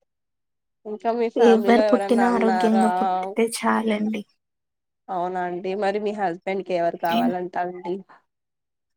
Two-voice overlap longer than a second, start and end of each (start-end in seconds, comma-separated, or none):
1.5-2.8